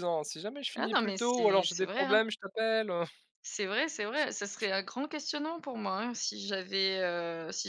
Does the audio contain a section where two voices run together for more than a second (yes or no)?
yes